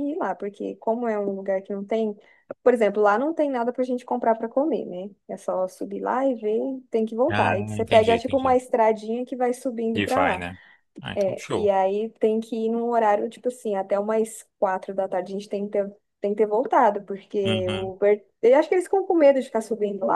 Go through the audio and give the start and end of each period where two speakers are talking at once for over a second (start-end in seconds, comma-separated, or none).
7.3-8.6